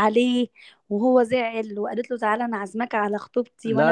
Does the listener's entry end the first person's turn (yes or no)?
yes